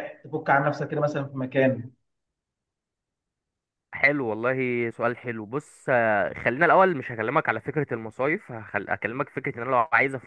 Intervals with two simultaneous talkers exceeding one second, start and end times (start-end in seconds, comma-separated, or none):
none